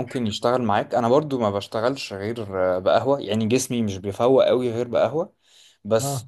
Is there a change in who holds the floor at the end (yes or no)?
no